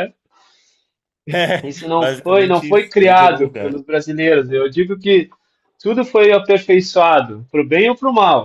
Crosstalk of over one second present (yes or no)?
yes